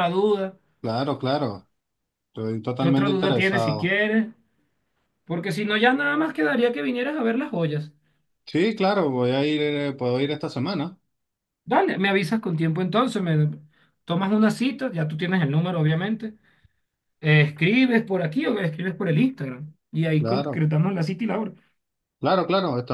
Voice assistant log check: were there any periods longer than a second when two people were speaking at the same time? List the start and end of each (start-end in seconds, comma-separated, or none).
2.8-4.0